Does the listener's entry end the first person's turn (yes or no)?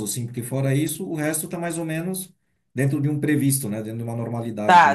yes